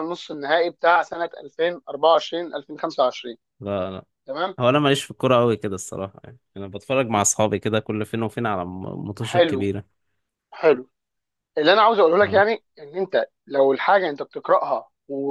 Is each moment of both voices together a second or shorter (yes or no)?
yes